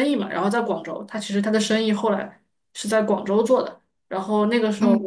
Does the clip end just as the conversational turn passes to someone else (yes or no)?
no